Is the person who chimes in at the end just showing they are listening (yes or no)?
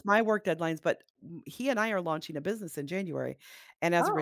yes